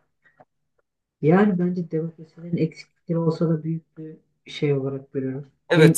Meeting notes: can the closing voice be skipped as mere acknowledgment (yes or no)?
no